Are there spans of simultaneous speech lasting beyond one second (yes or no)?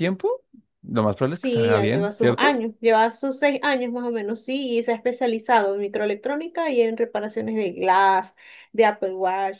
yes